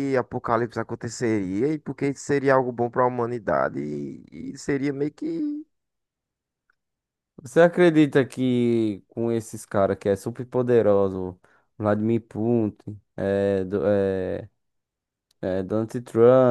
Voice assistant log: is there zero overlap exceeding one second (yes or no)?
yes